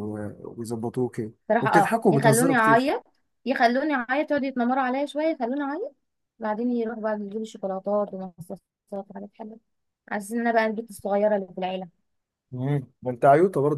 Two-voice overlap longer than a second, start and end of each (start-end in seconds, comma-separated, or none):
1.5-2.9